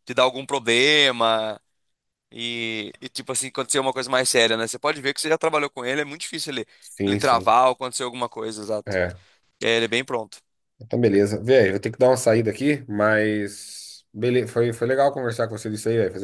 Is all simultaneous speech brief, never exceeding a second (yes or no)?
yes